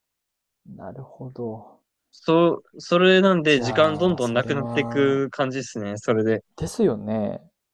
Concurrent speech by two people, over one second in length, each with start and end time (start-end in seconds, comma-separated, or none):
3.5-5.2